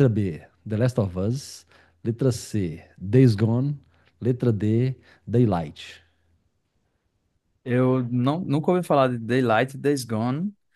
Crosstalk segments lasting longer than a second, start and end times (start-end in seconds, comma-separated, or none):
none